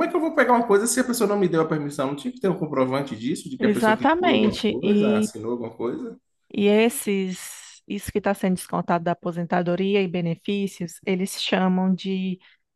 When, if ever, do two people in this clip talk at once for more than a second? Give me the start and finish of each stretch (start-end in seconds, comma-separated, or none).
3.6-5.3